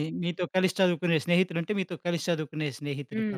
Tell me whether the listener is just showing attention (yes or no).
no